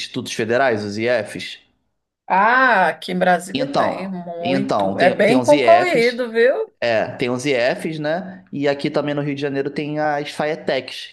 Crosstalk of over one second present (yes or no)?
yes